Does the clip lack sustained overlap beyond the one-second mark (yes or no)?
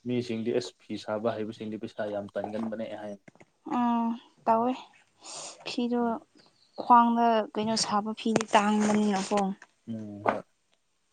yes